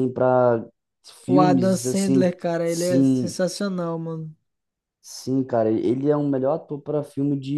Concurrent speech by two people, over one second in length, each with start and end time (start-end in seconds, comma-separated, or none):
1.3-3.4